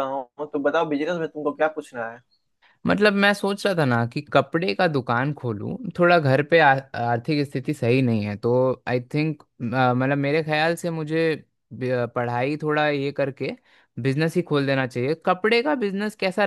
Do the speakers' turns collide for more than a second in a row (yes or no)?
no